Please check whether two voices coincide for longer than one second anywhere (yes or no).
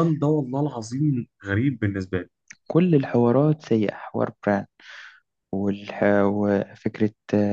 no